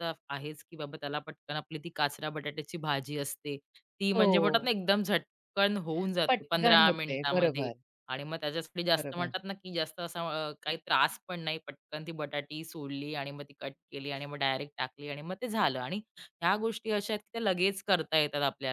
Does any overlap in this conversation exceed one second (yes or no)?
yes